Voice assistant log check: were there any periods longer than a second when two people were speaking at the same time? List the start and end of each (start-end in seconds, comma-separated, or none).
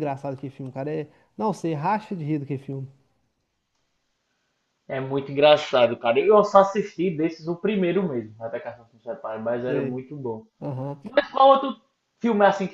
none